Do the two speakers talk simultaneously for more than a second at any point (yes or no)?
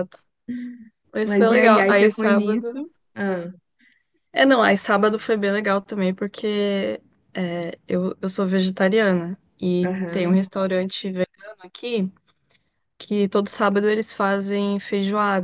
yes